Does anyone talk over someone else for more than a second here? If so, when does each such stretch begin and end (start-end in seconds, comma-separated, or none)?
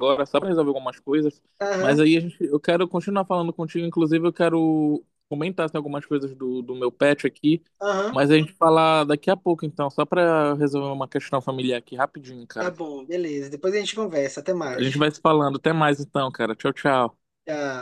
none